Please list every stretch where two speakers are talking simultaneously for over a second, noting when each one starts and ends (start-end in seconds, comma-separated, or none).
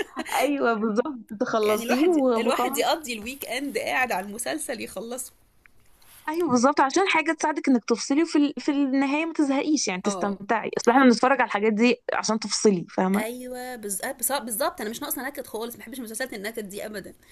1.6-2.9